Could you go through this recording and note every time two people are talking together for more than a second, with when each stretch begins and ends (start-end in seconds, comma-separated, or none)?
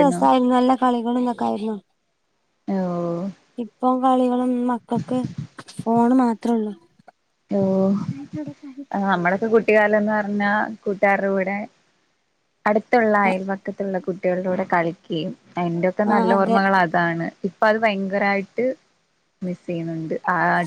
none